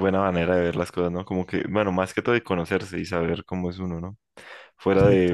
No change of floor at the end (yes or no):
yes